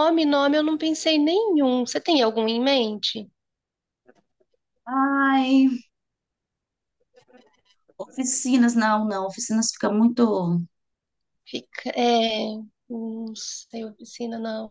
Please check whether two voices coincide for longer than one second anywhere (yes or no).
no